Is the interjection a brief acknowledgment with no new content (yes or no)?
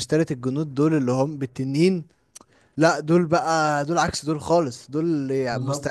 yes